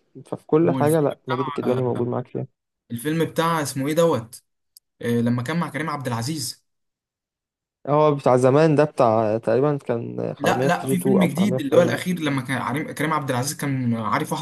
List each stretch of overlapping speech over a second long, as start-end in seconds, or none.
0.6-2.0, 10.4-12.0